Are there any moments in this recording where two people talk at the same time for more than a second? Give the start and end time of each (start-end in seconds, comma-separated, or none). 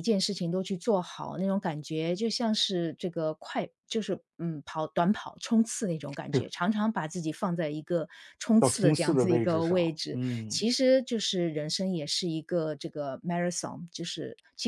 8.6-10.7